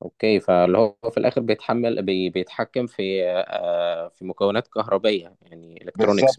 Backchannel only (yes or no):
no